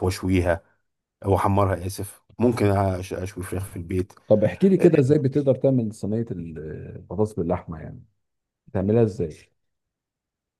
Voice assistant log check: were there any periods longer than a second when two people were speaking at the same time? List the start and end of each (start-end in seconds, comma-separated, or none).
none